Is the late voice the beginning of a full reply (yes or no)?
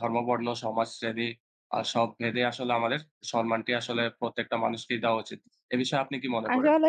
yes